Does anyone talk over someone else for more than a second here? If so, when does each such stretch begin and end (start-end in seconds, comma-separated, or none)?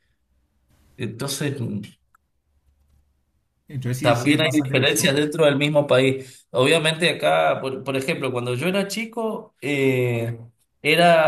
4.0-5.2